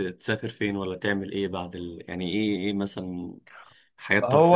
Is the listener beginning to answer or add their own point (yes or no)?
yes